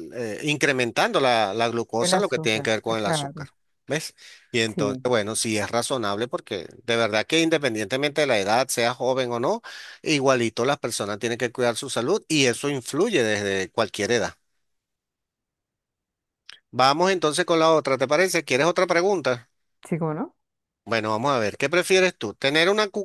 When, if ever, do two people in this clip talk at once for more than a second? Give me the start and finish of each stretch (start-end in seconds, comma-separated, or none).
2.0-3.5